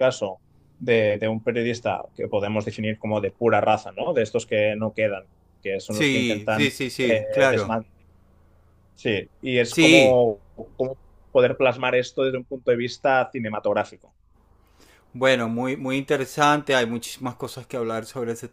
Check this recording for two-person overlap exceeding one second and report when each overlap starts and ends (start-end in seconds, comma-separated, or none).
5.9-7.7